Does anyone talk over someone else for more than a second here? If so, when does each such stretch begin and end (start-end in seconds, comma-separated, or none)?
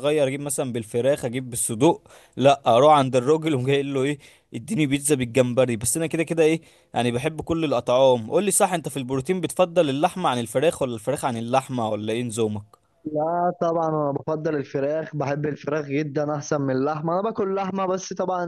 none